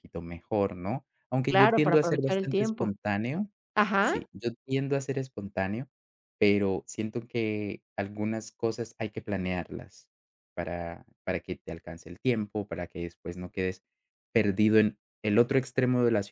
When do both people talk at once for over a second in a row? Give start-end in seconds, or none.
1.5-2.9